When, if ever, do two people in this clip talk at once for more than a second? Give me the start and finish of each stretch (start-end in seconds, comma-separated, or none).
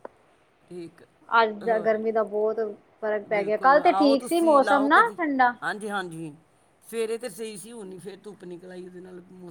3.3-5.2